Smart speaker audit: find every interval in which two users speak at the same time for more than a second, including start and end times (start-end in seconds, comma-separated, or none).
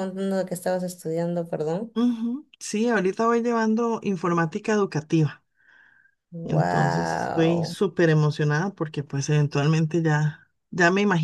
6.4-7.8